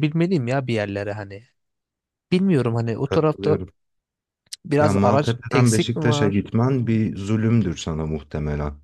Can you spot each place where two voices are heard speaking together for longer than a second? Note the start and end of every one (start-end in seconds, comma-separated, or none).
4.8-6.5